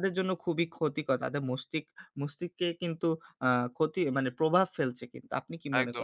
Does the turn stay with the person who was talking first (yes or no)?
no